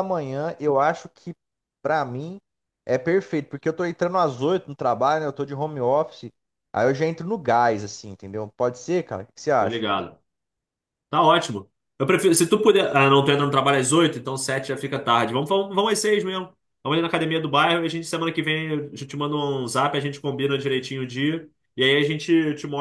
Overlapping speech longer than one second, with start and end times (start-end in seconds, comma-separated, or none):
none